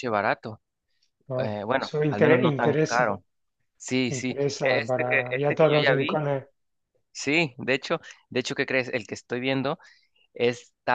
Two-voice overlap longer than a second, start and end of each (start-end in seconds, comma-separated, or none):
1.4-3.1, 4.1-6.2